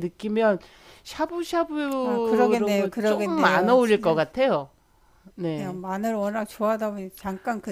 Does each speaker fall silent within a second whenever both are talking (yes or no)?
no